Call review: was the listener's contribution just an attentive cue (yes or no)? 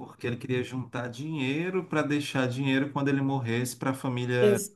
no